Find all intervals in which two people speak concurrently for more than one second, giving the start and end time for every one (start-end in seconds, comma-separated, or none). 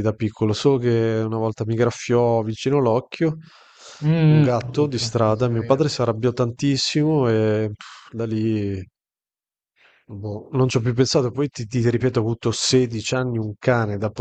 4.2-5.9